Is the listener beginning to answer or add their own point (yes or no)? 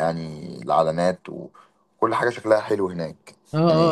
yes